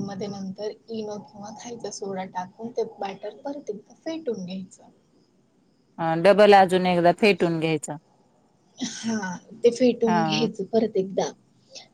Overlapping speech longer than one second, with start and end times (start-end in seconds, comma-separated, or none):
none